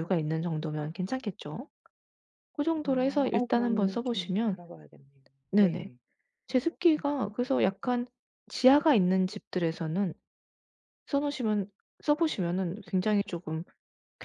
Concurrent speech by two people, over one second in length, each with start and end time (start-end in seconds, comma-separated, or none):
2.8-4.5